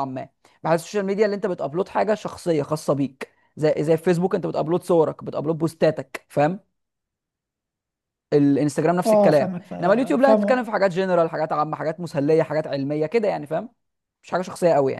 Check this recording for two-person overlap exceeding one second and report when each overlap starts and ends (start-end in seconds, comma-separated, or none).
9.1-10.7